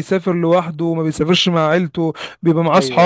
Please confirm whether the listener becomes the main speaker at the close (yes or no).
no